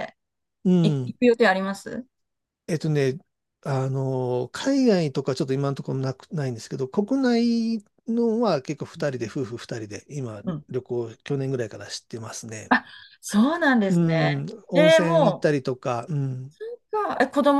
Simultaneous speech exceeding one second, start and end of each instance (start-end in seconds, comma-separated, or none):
13.9-15.6